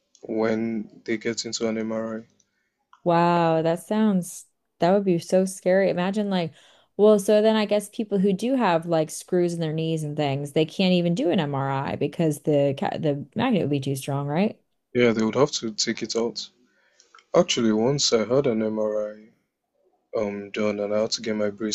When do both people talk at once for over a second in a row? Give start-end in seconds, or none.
none